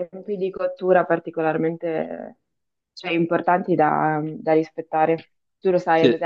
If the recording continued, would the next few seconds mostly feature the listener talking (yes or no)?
no